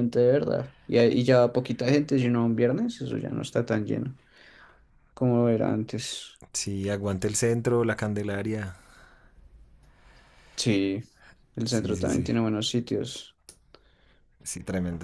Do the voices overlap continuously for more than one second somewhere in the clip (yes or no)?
no